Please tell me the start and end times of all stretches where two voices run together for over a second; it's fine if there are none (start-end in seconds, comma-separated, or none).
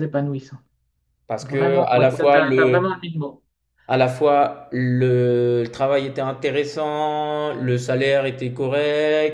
1.4-2.8